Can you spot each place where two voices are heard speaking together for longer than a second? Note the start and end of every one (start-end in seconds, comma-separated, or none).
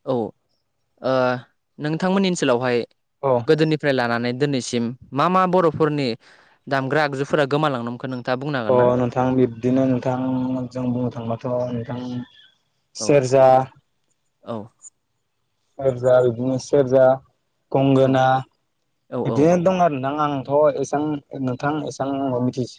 none